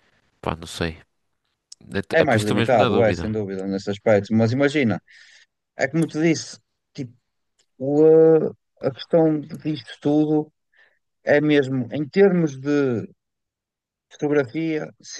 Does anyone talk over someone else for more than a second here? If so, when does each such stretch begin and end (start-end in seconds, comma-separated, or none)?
2.1-3.4